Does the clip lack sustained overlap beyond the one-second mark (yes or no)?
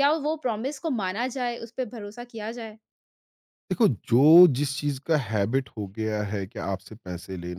yes